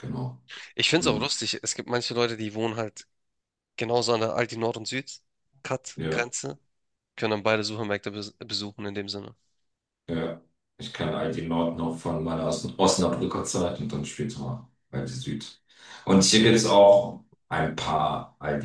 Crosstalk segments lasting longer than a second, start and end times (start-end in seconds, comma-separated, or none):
none